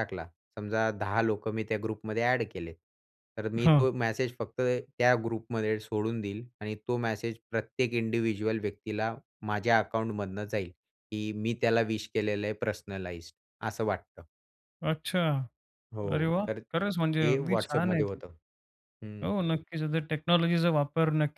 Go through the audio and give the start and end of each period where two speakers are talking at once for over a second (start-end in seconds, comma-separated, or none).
16.1-18.2